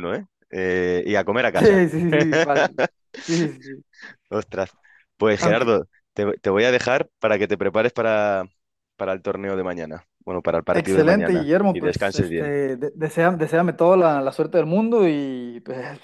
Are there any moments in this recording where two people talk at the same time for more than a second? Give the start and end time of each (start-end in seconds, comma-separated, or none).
10.7-12.5